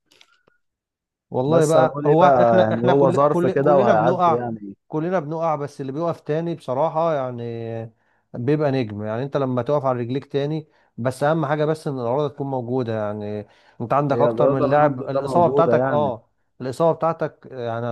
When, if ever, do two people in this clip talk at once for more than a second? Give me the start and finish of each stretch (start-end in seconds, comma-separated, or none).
1.5-4.5, 14.1-16.2